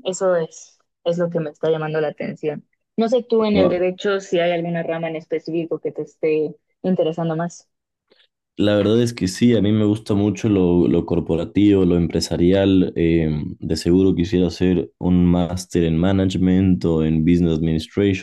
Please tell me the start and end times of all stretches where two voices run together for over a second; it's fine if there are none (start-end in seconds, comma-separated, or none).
none